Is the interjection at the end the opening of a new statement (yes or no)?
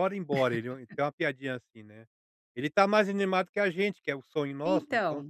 yes